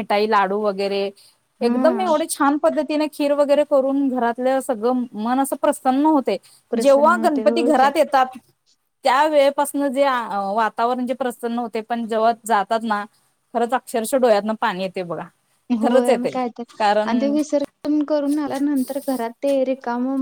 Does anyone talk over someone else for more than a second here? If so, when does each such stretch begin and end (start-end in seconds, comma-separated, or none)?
6.8-8.0